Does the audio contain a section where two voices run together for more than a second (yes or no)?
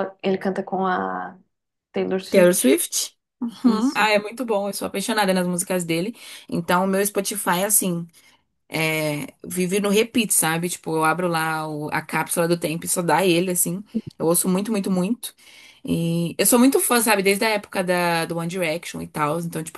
no